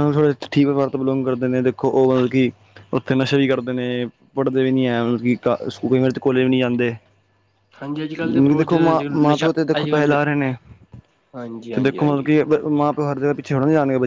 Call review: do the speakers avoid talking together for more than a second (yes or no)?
no